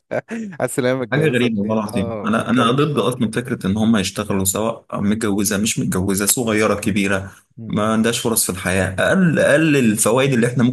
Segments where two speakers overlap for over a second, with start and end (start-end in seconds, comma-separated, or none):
1.1-2.9